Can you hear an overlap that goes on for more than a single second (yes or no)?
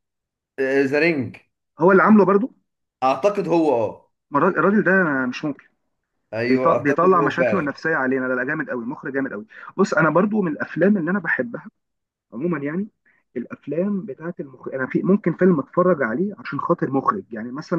yes